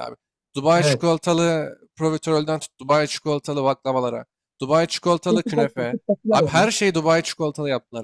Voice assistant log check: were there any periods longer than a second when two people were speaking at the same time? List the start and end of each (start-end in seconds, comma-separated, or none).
5.3-6.7